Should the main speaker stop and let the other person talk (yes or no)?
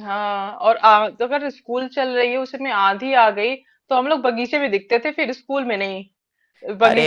no